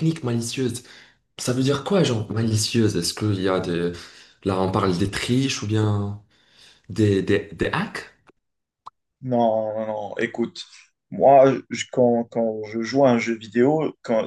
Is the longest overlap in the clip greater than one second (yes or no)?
no